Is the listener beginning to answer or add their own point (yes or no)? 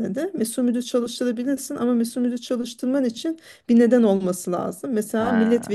no